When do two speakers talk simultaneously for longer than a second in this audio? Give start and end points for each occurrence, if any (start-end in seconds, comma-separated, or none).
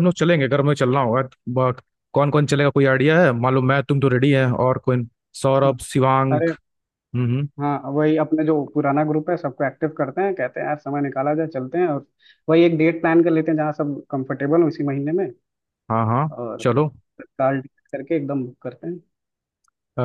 none